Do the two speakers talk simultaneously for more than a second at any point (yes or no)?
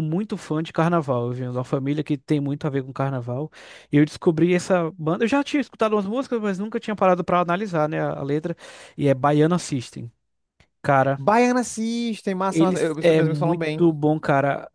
yes